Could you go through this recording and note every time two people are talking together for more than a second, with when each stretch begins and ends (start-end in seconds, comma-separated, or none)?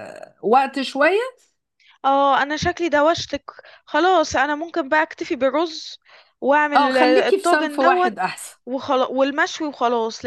6.7-8.1